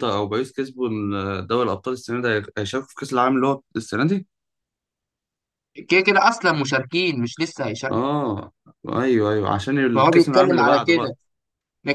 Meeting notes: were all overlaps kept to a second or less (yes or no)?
no